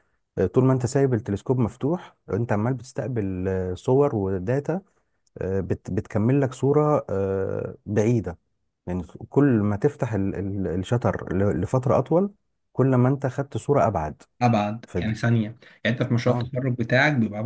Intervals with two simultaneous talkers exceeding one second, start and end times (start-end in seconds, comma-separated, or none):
none